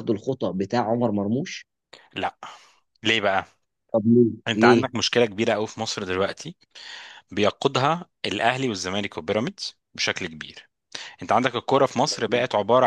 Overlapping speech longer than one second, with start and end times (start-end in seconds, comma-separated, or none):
none